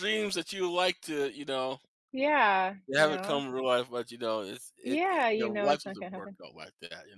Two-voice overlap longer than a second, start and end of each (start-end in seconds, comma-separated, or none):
4.8-6.4